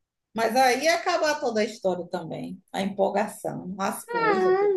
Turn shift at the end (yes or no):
yes